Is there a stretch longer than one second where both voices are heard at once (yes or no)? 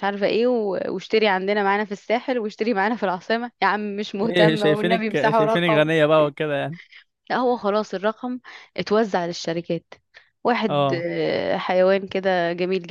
yes